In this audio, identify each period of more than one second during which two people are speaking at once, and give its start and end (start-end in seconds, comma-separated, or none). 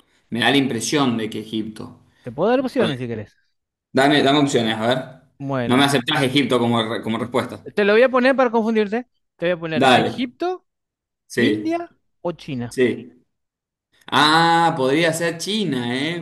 none